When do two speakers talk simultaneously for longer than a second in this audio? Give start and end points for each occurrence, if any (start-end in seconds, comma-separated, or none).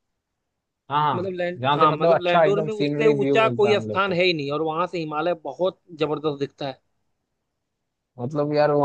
1.1-4.2